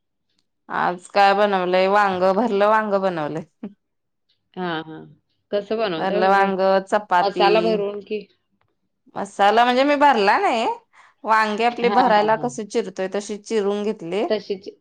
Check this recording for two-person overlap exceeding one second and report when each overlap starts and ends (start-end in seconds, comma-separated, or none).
none